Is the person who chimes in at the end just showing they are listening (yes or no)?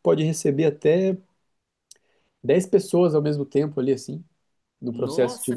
no